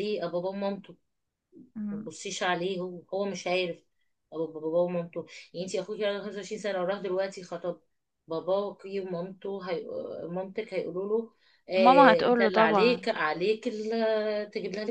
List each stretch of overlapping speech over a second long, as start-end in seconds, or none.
11.8-13.1